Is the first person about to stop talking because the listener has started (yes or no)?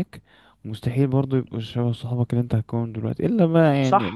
yes